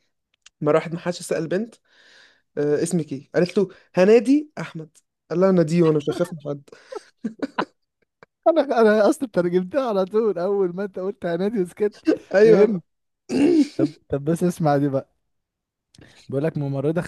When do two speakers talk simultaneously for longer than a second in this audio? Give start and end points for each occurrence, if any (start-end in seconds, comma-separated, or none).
none